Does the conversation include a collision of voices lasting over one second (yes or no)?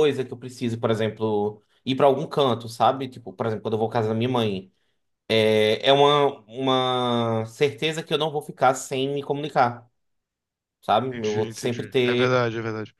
yes